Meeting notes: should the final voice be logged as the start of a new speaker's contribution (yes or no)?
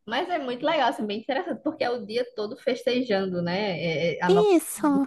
no